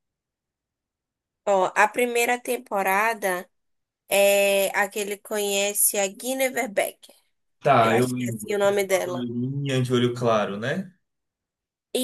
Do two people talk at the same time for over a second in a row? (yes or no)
yes